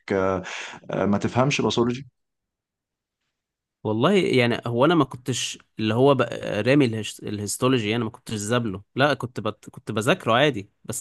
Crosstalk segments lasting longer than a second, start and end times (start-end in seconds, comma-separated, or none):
none